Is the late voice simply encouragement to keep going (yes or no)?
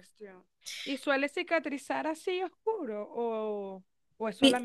yes